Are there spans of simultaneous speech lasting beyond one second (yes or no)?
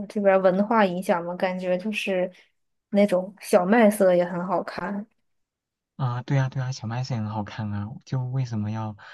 no